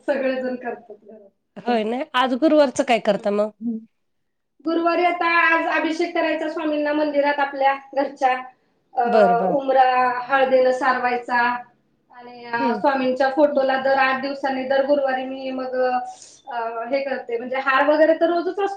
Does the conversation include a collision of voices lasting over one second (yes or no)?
no